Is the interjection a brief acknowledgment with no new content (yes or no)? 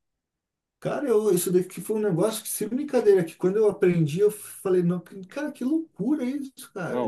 yes